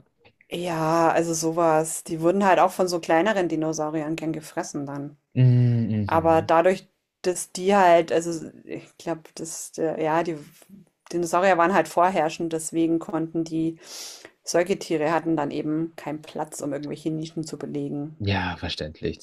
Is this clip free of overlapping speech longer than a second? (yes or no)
yes